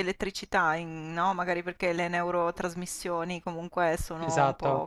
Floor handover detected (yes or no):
no